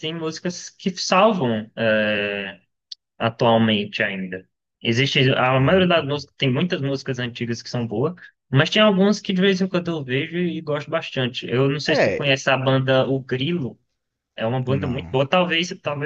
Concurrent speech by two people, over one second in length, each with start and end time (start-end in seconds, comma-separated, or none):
none